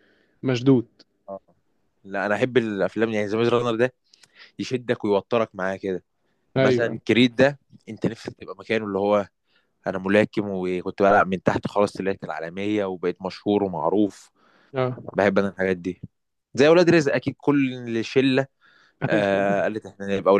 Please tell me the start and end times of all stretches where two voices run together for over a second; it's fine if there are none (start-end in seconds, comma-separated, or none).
none